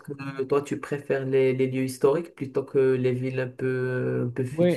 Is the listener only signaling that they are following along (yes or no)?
no